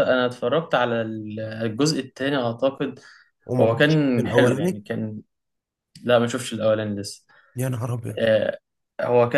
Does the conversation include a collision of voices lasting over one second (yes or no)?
yes